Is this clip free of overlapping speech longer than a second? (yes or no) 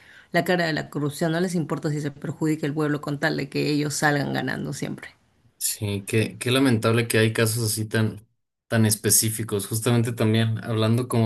yes